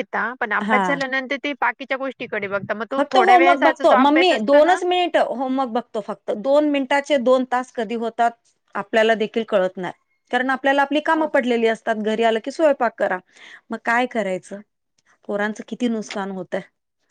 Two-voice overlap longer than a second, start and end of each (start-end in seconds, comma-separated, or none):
3.0-4.8